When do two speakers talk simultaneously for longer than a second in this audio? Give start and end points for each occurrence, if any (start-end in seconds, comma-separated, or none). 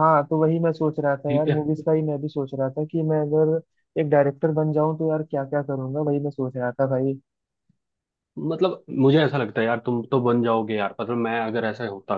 none